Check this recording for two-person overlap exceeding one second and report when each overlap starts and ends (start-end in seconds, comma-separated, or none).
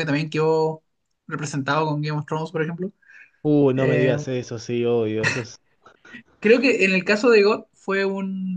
none